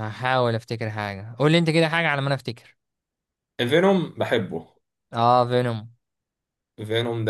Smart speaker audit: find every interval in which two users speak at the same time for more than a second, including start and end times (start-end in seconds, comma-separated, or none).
none